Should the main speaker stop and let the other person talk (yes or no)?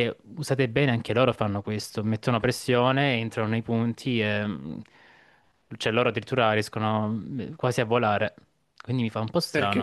yes